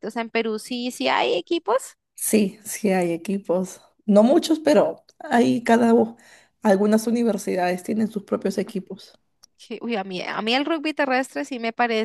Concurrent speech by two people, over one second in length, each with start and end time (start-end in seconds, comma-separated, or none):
none